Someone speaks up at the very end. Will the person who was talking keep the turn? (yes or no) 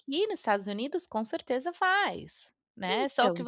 yes